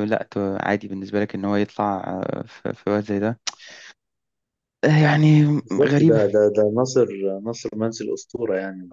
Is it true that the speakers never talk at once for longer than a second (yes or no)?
yes